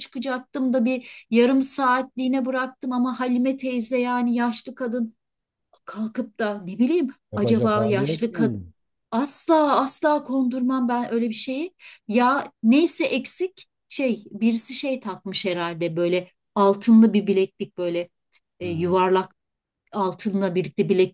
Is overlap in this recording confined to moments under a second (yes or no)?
no